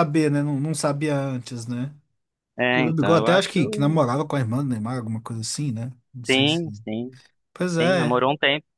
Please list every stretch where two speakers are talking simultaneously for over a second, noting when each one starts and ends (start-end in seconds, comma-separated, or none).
2.7-4.0